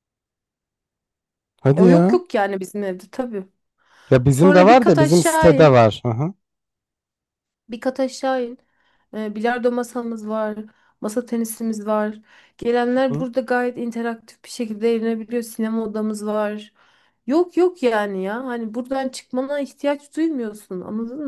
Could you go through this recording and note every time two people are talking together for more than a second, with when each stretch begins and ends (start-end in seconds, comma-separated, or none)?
4.3-5.8